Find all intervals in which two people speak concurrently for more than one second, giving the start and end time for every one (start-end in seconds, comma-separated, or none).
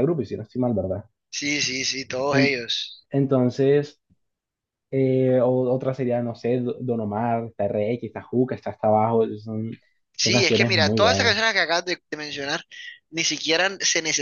10.2-11.4